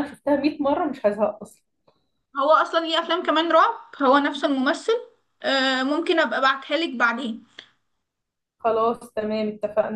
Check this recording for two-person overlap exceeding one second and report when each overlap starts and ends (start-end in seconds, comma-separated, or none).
none